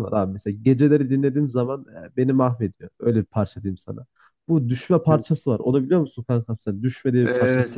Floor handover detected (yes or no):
yes